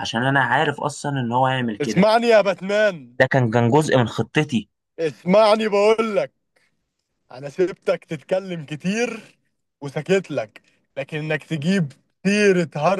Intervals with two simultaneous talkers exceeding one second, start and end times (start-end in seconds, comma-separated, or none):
none